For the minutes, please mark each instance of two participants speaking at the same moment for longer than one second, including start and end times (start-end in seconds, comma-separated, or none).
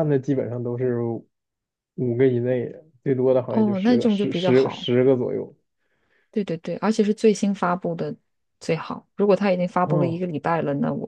3.5-4.8